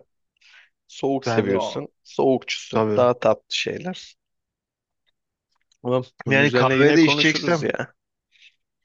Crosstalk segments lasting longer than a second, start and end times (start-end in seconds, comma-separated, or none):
6.3-7.7